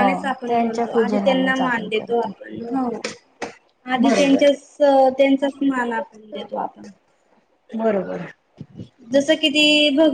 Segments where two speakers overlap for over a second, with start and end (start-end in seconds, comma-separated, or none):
1.0-2.3